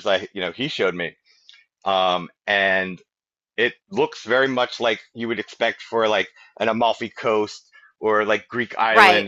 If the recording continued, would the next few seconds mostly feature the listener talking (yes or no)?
no